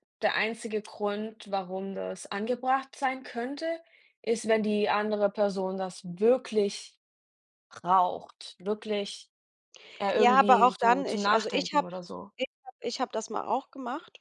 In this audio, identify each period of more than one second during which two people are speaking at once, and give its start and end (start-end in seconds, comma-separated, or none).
10.1-11.9